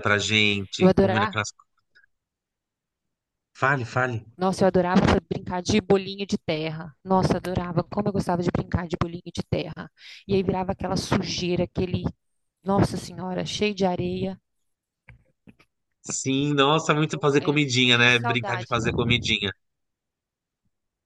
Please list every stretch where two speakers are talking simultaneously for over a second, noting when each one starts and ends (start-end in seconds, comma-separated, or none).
17.1-18.7